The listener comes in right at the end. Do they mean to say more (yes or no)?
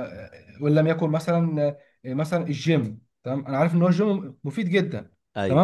no